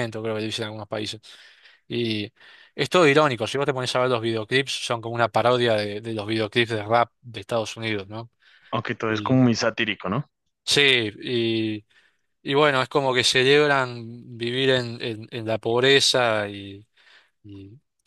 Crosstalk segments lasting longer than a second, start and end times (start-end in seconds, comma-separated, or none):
none